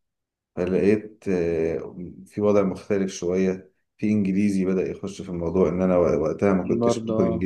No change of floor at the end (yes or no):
yes